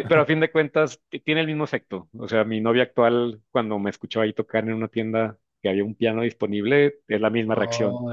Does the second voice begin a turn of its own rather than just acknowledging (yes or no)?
yes